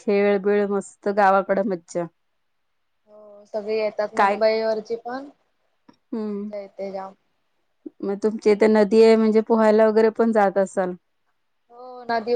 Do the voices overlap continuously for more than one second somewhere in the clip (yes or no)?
no